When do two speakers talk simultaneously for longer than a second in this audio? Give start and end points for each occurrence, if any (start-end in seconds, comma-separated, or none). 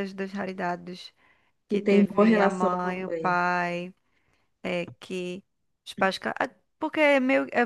1.7-3.4